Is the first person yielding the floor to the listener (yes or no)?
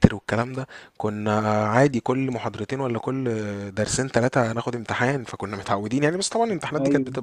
yes